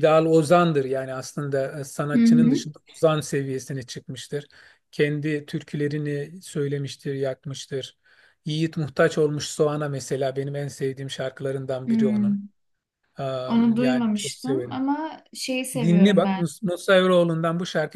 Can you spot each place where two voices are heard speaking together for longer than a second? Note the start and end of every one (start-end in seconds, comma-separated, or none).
13.5-14.8